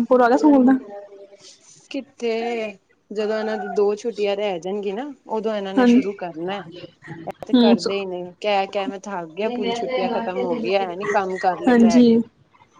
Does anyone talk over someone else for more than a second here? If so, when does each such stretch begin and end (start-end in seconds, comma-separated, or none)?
none